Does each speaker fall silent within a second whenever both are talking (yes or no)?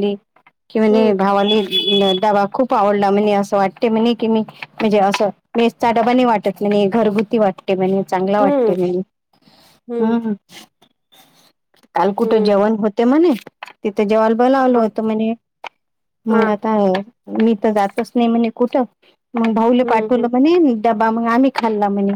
yes